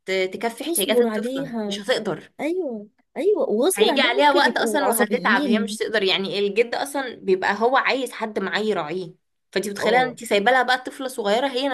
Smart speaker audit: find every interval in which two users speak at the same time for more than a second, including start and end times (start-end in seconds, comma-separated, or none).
0.6-1.8, 3.7-5.8